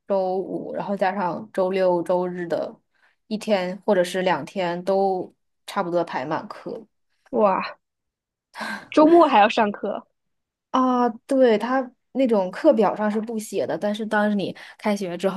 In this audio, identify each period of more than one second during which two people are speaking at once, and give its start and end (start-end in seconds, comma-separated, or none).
none